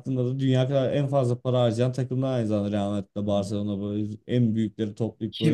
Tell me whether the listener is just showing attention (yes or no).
no